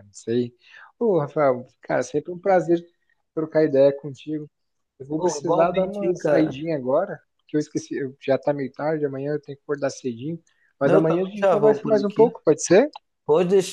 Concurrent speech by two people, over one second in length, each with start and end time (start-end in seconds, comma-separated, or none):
5.2-6.6, 10.8-12.4